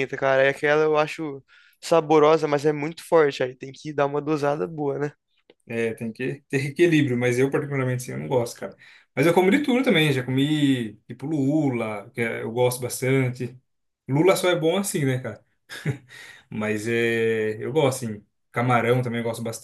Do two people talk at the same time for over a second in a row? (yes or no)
no